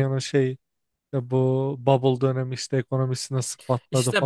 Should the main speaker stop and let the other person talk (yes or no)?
yes